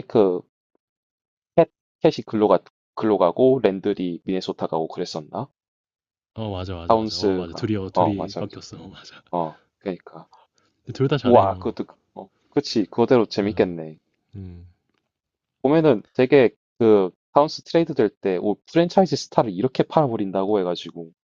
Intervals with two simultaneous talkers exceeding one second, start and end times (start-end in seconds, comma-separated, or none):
6.9-8.6